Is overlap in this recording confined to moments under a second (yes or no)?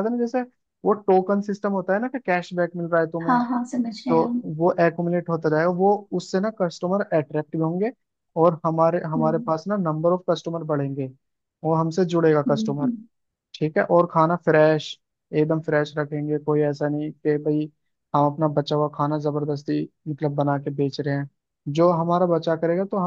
yes